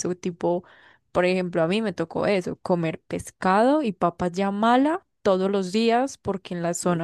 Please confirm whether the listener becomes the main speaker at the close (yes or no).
no